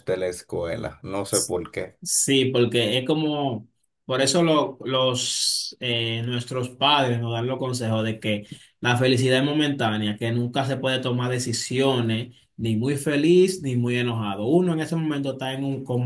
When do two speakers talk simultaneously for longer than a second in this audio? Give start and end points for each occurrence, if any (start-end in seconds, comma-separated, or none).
none